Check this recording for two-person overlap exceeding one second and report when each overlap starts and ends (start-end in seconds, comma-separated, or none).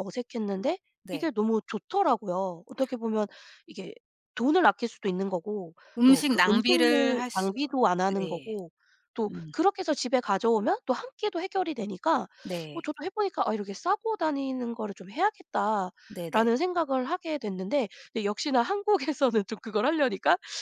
6.0-7.5